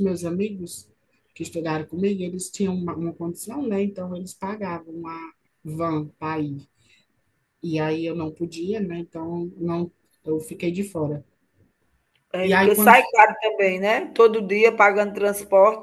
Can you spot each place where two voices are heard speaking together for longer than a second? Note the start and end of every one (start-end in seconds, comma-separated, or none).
none